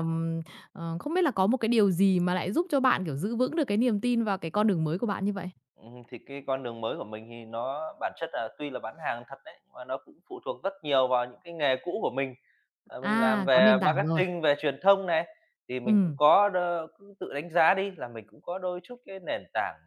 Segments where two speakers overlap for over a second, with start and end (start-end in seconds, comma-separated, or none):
13.0-14.2